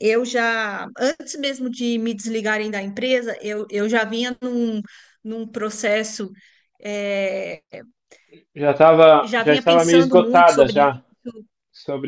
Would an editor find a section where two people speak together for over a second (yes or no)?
yes